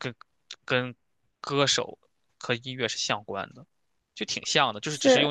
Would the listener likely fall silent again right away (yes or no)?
yes